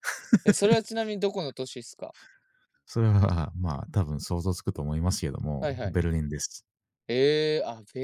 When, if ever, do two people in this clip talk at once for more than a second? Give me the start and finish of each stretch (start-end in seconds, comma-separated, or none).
none